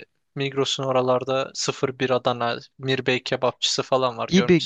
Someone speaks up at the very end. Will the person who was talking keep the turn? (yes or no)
no